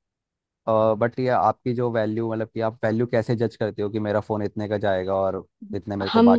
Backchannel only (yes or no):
no